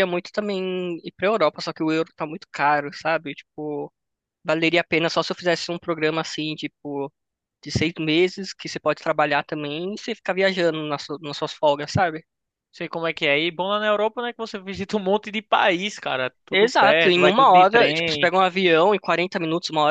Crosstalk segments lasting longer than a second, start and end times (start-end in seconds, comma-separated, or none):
16.5-18.3